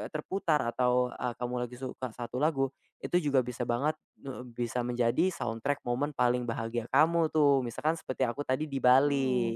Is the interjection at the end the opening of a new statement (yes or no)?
yes